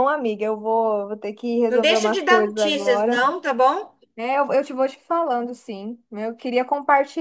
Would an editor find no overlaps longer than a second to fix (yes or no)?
no